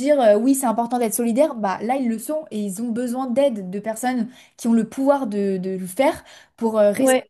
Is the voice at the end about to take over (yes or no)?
no